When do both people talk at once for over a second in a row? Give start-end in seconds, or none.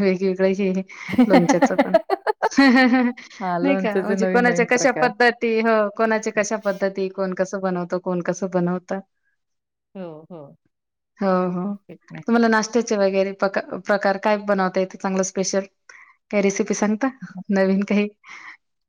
3.6-5.1